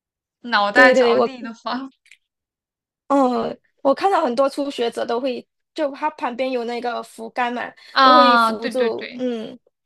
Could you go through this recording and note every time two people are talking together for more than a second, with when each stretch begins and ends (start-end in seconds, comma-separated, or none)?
7.9-9.2